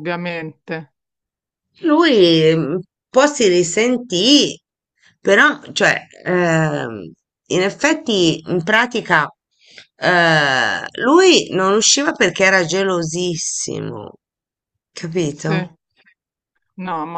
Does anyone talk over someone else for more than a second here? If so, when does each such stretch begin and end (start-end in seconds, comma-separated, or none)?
none